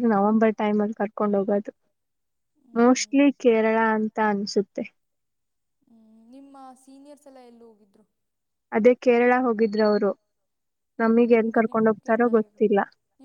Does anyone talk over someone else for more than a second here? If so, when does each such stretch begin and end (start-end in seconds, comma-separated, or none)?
11.0-12.6